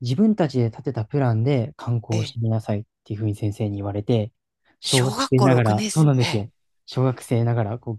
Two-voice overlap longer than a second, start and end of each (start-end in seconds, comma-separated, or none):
4.8-6.5